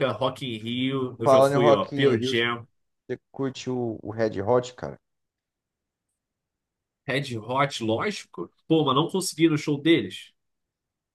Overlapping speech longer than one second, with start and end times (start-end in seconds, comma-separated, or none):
1.2-2.6